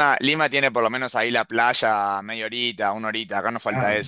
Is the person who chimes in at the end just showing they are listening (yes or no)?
no